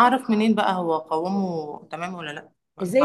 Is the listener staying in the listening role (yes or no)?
no